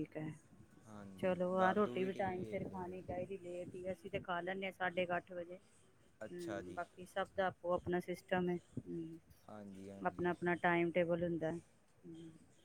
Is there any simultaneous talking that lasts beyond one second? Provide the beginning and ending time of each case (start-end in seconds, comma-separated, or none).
1.2-2.9